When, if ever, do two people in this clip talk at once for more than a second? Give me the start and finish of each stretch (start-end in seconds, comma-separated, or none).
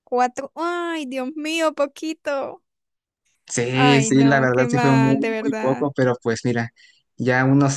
3.7-5.9